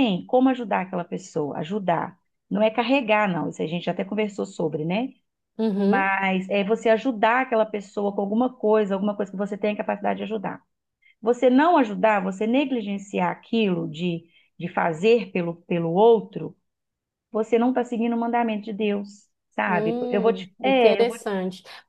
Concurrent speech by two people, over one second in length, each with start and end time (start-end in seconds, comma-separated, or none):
19.6-21.2